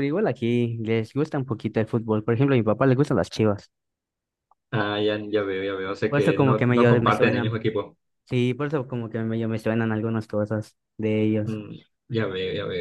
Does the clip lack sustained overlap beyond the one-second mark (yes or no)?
no